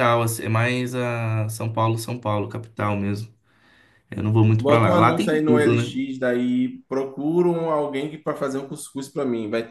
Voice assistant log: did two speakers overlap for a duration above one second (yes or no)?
yes